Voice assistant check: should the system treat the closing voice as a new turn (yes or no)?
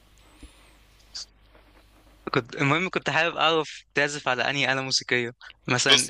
no